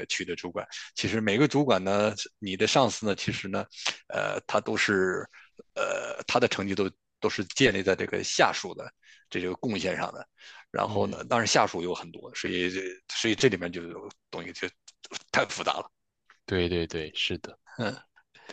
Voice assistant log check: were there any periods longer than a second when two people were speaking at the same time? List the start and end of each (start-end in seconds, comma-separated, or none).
none